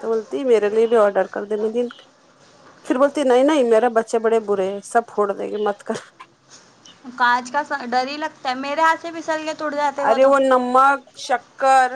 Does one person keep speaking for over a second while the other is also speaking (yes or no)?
no